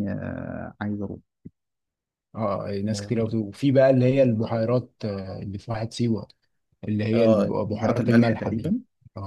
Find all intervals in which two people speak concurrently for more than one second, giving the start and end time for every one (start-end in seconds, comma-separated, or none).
7.1-8.7